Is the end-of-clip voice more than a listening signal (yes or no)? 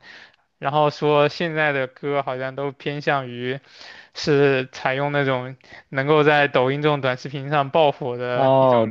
yes